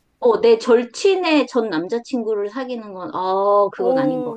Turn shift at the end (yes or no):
yes